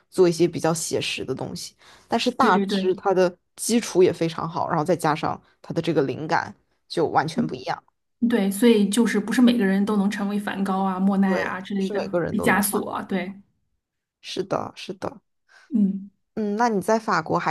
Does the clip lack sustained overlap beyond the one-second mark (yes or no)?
no